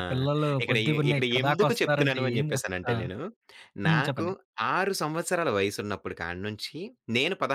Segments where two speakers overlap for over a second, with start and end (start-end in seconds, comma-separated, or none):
0.6-3.0